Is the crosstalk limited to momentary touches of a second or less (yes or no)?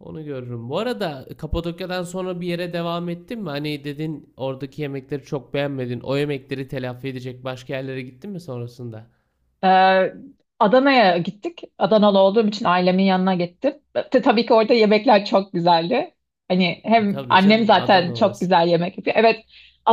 no